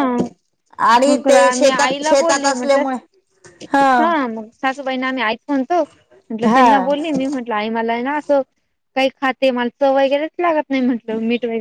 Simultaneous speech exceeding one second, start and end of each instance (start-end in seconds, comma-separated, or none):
1.1-2.8